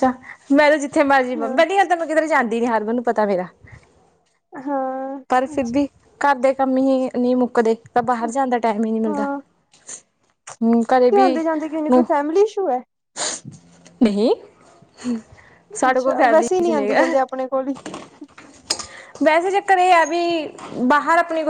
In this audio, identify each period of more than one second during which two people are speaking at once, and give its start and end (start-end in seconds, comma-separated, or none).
15.9-17.1